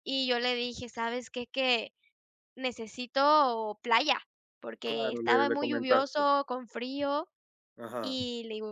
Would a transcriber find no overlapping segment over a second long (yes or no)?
no